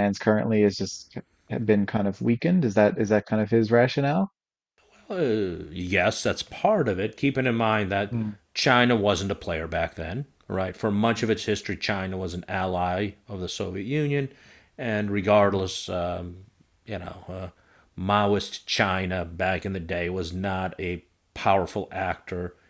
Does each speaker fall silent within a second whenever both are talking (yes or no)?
yes